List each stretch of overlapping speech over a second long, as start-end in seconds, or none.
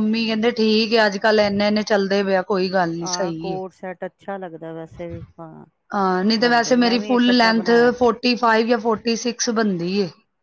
6.4-7.9